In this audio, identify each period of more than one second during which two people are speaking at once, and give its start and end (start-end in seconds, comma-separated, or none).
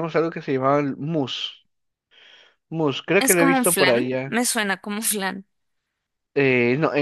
3.2-4.4